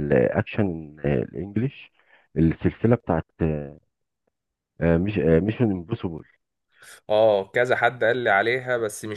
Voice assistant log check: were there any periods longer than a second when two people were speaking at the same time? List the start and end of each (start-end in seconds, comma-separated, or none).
none